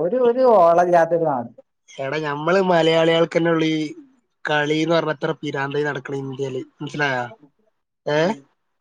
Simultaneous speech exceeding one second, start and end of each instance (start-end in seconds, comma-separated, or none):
none